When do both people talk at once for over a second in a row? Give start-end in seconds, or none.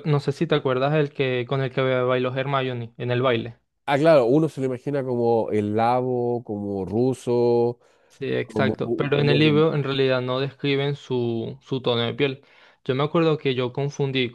8.4-9.7